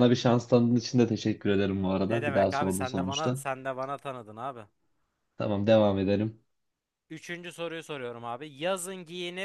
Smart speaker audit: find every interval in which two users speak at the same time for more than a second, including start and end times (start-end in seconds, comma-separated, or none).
2.0-3.5